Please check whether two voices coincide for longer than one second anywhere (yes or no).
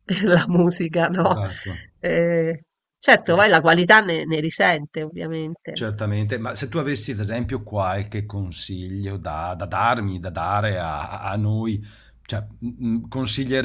no